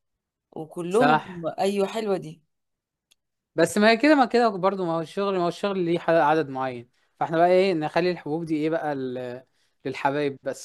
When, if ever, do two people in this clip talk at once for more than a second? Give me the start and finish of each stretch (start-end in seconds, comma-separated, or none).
none